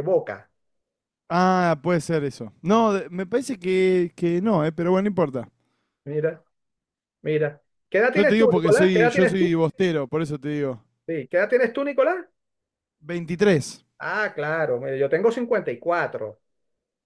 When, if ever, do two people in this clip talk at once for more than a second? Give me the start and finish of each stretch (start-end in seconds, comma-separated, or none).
8.1-9.6